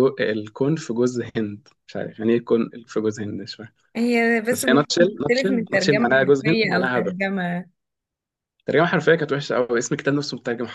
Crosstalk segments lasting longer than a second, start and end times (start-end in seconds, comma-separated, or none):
4.5-7.2